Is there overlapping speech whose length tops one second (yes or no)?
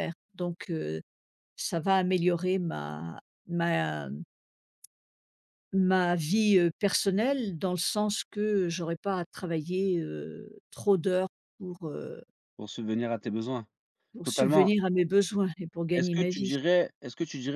no